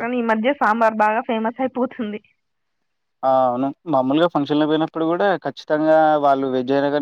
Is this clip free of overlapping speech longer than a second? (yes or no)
yes